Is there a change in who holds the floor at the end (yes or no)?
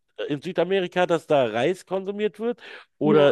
no